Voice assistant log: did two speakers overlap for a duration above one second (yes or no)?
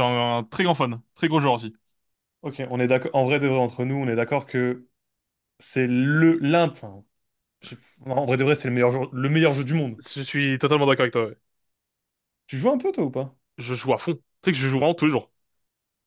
no